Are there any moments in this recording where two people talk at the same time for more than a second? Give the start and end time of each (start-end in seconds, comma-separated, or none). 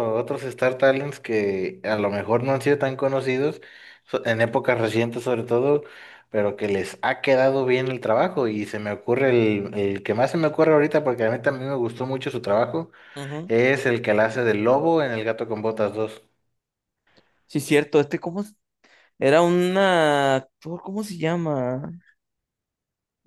none